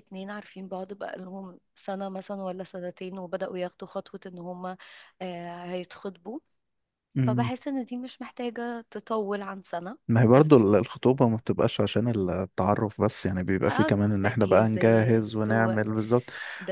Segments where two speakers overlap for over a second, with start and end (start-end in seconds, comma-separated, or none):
13.8-15.8